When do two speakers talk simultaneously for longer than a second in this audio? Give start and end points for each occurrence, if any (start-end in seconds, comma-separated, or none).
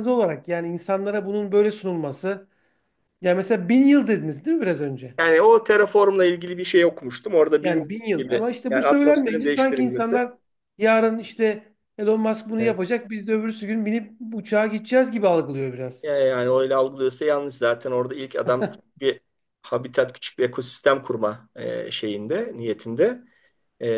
7.6-10.2